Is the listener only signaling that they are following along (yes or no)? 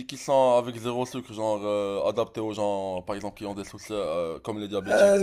no